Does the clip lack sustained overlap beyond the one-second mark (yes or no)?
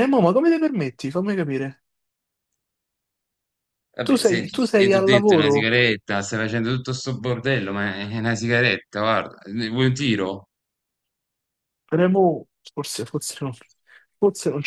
no